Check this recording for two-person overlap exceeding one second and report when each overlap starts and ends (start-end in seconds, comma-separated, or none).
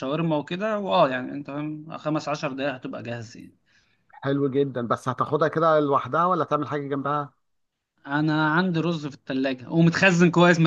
none